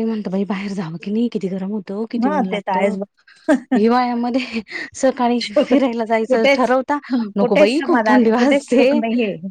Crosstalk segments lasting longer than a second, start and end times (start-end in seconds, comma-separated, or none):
7.4-8.9